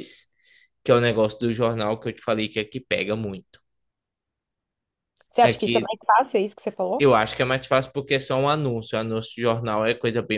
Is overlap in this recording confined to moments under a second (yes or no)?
yes